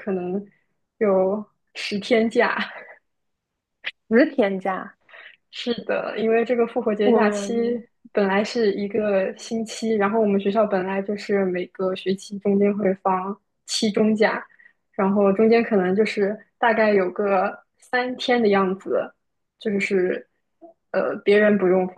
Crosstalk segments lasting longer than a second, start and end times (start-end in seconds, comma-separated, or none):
none